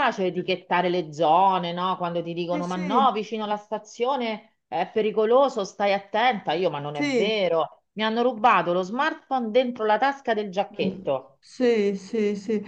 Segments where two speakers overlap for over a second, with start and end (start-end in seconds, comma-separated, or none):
none